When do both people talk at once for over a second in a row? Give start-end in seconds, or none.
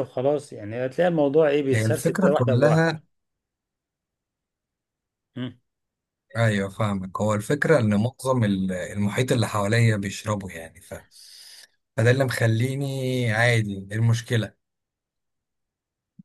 1.7-3.0